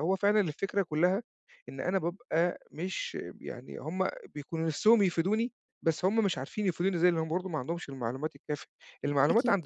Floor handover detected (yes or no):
no